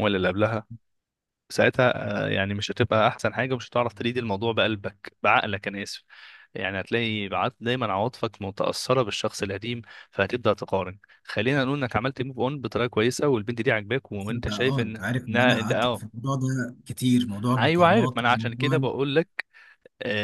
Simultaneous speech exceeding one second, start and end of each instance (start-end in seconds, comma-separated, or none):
14.2-16.0, 17.6-18.9